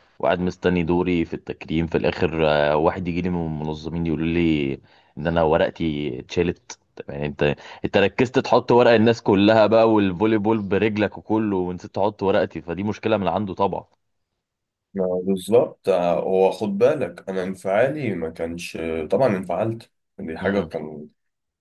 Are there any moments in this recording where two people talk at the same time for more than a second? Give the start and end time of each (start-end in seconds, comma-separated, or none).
none